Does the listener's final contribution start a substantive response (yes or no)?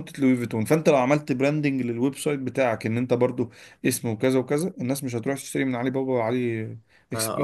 yes